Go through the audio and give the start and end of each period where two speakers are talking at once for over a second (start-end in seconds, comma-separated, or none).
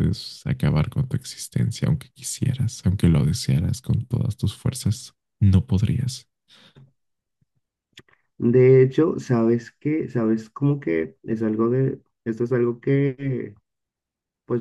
none